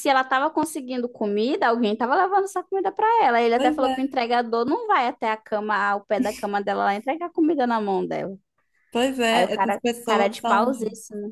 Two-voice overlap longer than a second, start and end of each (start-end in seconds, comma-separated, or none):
9.3-10.8